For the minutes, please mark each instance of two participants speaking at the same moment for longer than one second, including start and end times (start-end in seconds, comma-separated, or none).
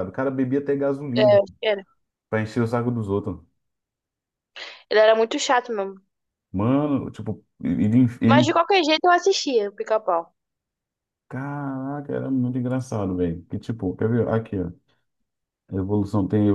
none